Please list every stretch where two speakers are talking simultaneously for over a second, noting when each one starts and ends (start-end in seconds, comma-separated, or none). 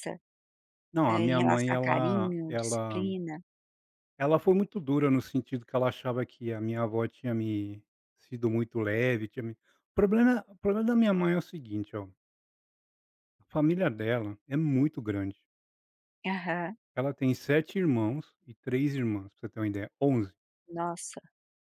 1.1-3.0